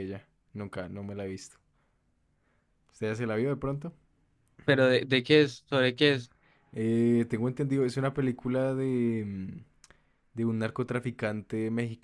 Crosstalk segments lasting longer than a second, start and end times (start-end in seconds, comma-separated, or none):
none